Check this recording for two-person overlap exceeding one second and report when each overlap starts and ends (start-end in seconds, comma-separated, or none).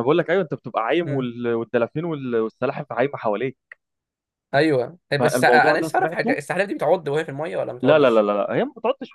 5.2-6.4